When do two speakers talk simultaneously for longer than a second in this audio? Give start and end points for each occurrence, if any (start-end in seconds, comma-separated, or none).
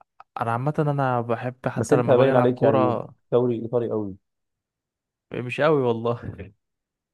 1.8-3.1